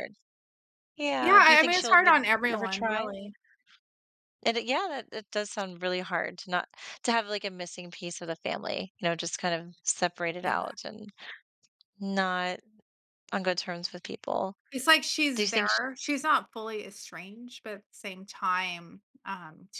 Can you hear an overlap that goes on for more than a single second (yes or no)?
yes